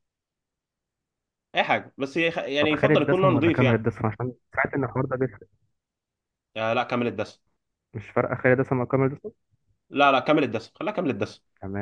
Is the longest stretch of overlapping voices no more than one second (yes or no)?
no